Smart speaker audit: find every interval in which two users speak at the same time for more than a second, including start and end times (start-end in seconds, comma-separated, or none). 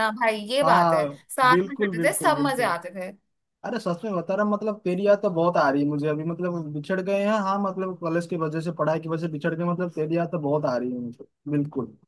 0.6-2.7